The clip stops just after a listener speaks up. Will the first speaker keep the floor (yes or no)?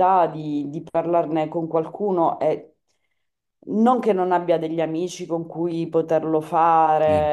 yes